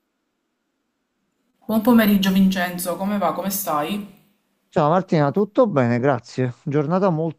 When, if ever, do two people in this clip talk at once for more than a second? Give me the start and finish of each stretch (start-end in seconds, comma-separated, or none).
none